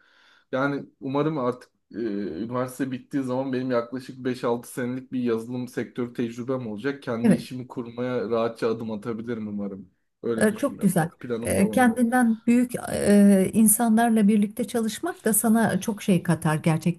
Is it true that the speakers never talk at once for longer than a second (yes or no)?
no